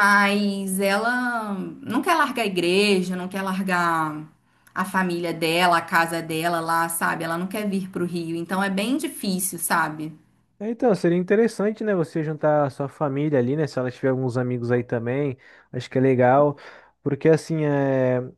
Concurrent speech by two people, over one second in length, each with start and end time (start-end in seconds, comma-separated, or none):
none